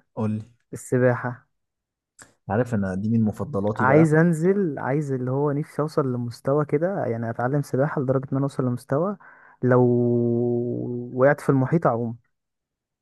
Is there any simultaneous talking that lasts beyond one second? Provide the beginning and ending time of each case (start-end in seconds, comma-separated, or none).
none